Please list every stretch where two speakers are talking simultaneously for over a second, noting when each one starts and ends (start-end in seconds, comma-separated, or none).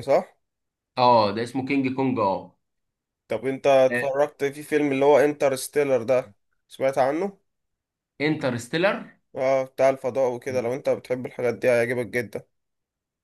none